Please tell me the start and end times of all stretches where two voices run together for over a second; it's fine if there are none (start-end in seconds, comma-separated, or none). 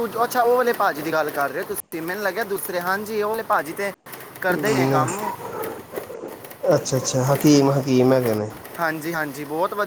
none